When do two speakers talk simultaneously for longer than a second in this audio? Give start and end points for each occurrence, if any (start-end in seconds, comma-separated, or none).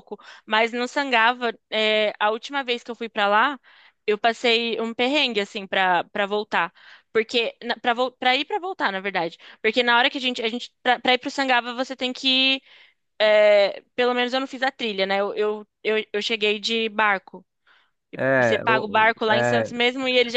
18.4-19.7